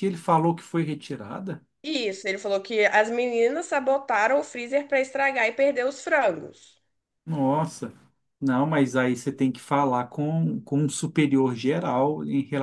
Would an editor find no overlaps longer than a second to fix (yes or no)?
yes